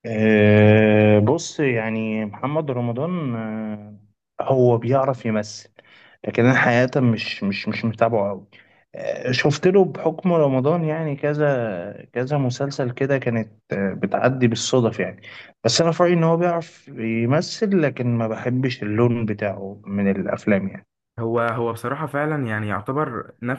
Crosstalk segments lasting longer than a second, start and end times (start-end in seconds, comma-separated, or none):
none